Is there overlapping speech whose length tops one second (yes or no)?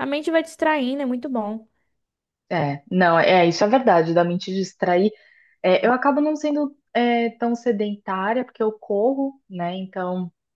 no